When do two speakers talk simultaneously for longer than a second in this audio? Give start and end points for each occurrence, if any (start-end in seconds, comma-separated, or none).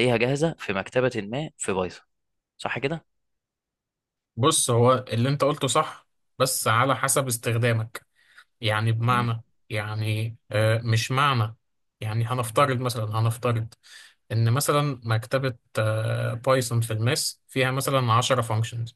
none